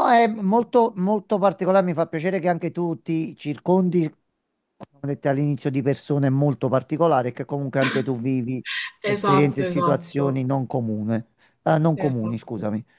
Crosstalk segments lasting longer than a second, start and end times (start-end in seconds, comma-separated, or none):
9.1-10.4